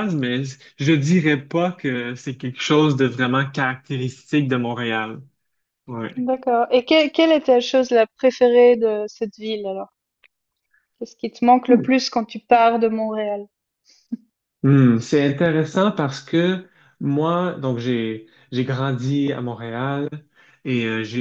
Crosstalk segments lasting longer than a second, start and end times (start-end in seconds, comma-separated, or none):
none